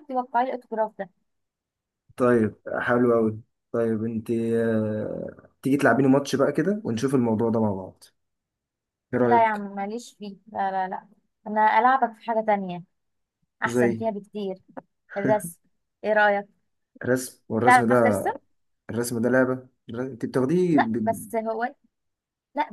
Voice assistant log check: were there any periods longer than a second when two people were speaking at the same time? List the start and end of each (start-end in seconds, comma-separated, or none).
none